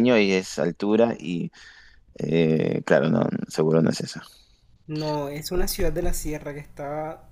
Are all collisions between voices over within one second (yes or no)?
yes